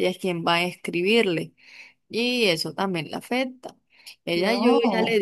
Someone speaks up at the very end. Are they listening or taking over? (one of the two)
listening